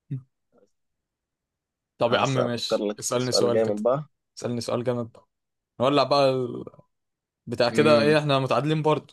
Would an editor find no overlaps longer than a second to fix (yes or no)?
no